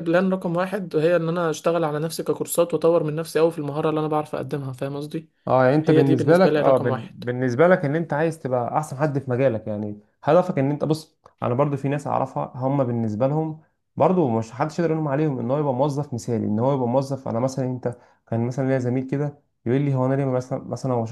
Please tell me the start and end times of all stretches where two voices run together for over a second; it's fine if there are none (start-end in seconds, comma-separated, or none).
5.8-7.1